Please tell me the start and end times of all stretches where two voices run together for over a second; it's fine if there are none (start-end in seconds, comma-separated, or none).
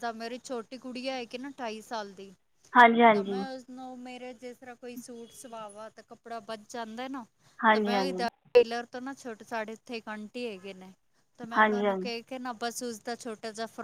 none